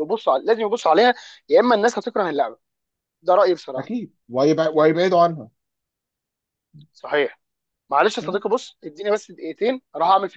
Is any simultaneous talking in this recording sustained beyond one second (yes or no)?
no